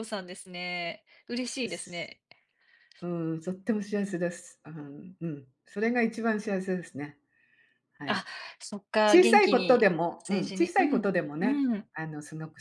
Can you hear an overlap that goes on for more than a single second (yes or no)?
yes